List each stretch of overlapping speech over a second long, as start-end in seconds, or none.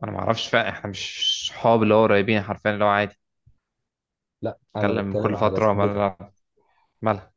4.8-6.0